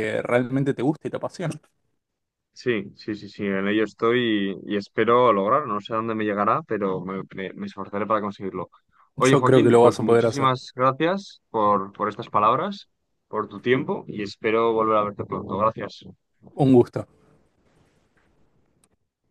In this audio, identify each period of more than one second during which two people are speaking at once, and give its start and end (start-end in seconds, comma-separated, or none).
9.2-10.5